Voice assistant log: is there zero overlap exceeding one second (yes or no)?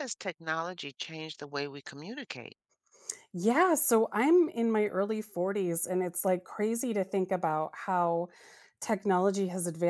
yes